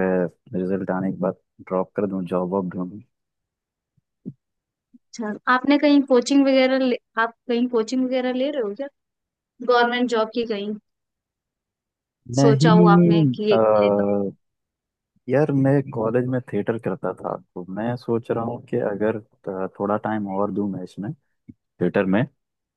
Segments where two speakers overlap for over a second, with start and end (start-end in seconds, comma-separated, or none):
12.4-14.2